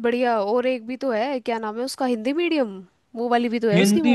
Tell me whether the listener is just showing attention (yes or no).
no